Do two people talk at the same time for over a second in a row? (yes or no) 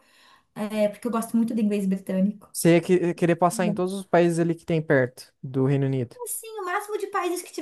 no